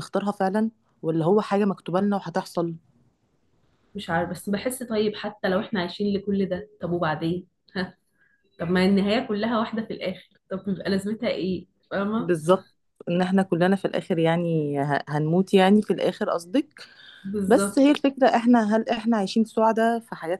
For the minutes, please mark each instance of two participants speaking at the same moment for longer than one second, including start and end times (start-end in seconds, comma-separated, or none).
none